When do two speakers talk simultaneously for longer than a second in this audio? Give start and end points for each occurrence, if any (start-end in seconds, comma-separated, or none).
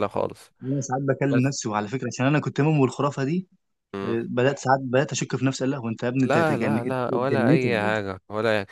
6.2-7.9